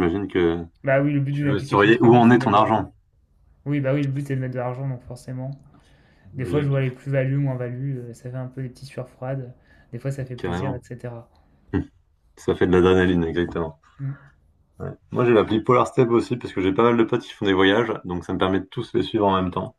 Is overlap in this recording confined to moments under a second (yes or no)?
no